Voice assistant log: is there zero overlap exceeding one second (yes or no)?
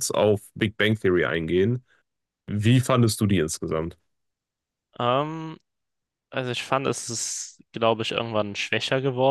yes